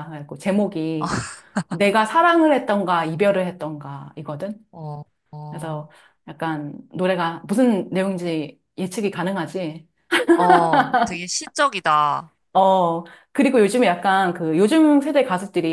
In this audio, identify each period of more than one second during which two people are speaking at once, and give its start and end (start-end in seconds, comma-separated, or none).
none